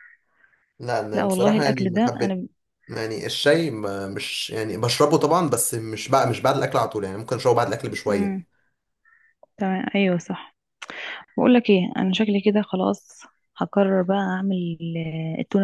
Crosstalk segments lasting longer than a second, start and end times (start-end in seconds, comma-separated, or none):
1.1-2.4